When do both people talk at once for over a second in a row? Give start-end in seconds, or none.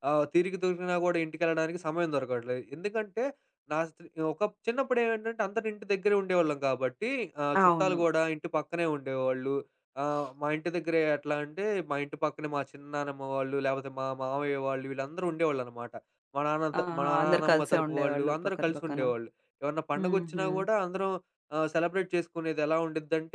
16.8-19.0